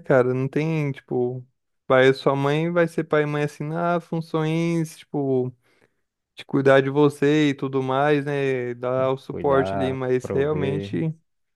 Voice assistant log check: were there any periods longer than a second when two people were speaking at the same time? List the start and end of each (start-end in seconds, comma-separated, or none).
8.9-10.9